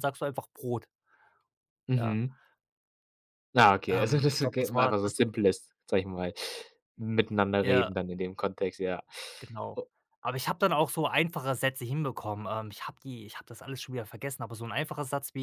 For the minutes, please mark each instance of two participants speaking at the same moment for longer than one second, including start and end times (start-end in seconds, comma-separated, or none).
3.9-5.2